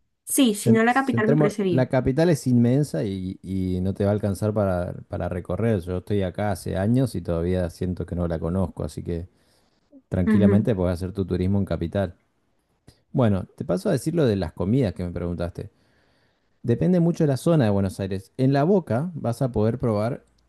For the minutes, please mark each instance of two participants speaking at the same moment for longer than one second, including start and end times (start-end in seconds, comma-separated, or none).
0.6-1.9